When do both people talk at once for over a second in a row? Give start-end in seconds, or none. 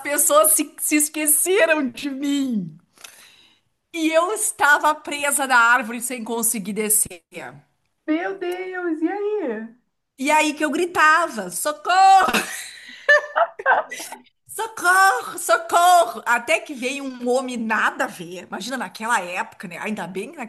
none